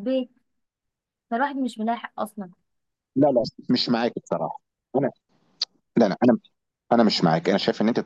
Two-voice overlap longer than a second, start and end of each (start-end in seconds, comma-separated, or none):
none